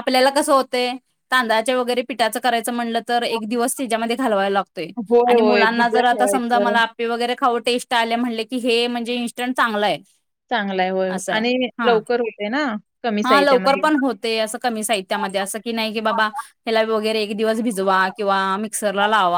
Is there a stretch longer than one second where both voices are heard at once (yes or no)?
yes